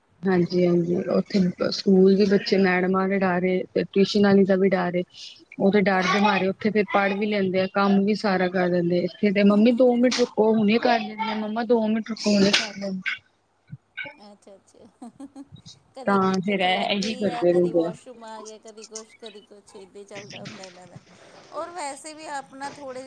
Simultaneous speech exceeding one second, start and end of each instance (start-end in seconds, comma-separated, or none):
16.1-17.9